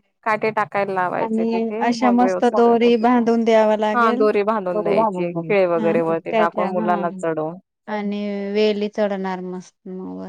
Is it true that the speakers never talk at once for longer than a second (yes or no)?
no